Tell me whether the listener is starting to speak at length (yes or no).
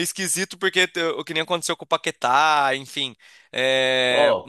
yes